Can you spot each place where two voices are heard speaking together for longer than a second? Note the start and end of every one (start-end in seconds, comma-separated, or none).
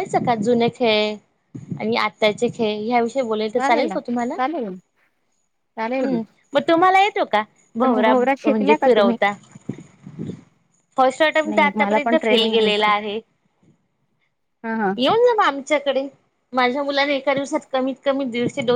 7.8-9.2, 11.5-12.9